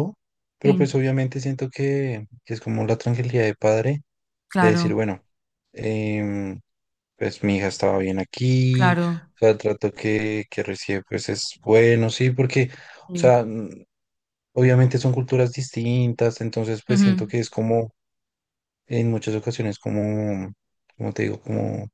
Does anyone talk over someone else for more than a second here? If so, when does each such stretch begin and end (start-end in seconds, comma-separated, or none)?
none